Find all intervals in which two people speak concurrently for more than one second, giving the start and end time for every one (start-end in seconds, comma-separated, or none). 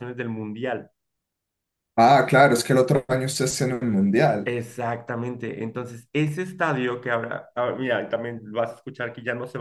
none